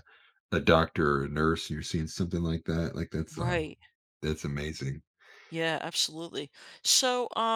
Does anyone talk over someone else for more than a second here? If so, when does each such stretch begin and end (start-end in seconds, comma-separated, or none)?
none